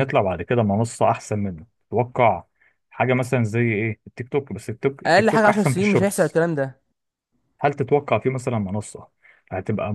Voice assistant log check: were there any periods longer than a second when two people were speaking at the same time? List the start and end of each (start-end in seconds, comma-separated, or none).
5.1-6.4